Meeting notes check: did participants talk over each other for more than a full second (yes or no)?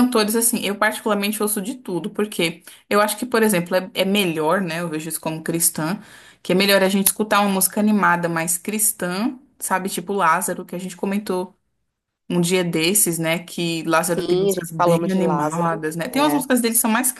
yes